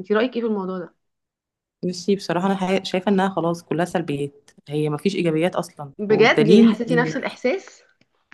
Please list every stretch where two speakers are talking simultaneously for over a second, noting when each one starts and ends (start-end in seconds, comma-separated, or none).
6.0-7.3